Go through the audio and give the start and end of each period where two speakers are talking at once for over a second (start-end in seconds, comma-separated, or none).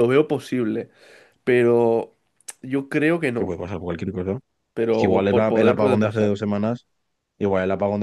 4.9-6.3